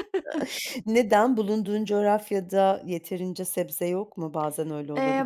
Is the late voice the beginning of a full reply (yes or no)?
yes